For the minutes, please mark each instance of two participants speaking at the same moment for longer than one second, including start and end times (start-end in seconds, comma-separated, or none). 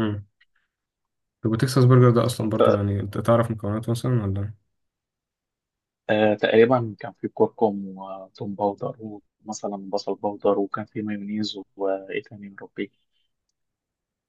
none